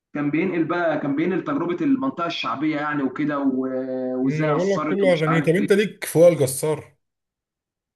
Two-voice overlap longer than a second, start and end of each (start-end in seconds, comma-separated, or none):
4.3-5.7